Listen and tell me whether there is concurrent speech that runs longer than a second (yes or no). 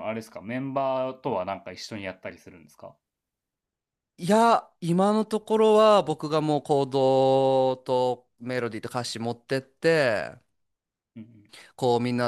no